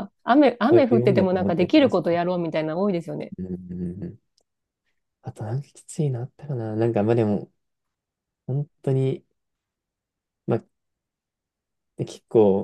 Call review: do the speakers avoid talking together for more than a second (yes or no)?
no